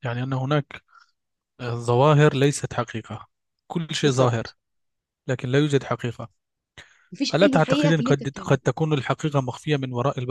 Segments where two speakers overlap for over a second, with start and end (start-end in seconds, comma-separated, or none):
7.3-8.6